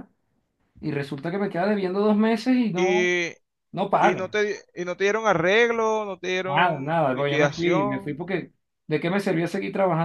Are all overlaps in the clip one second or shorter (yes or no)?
no